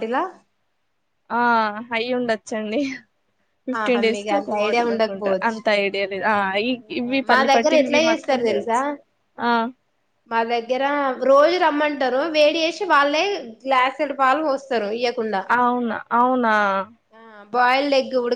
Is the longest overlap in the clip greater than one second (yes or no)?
yes